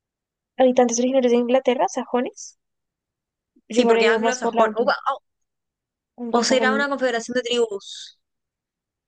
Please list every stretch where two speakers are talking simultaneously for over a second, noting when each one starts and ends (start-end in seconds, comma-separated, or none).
3.7-4.9